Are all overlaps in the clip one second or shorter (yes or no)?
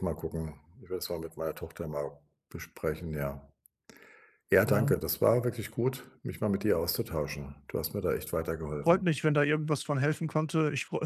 yes